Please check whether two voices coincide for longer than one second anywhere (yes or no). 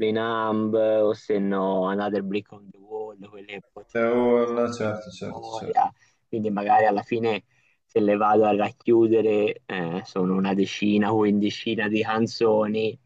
yes